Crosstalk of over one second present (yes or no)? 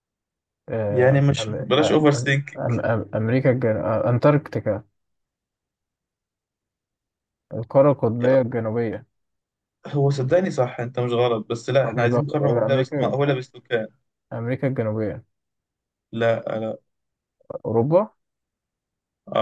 yes